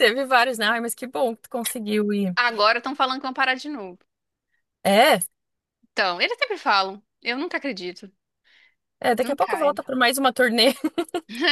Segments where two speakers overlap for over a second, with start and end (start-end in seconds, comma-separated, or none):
none